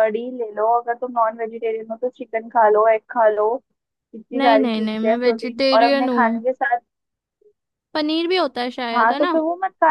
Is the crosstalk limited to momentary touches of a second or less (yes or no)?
no